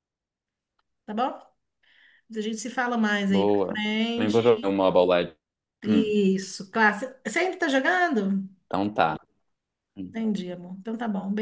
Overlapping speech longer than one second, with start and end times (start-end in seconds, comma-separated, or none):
3.3-4.7